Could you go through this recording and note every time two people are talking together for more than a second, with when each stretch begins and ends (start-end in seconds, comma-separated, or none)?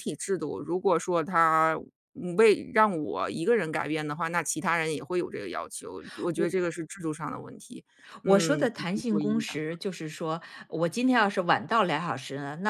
8.2-9.5